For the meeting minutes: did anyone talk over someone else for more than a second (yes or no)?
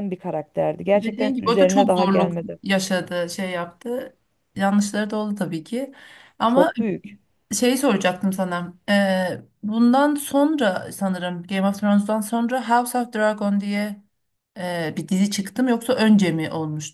yes